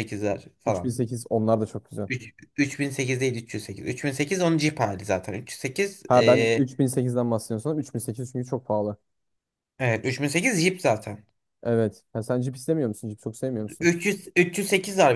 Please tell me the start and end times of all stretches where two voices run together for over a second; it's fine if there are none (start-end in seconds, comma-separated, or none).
none